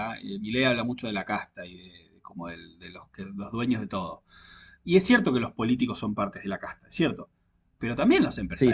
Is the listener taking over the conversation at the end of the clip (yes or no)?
no